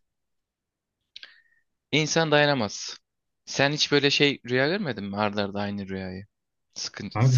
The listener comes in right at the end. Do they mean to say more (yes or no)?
yes